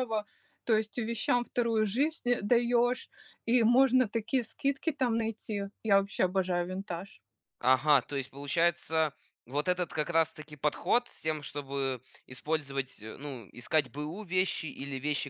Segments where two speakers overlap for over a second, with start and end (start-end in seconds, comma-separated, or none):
none